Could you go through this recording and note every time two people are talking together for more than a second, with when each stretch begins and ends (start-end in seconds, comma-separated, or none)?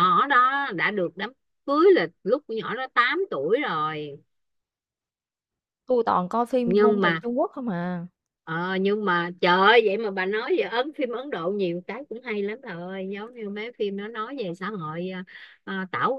none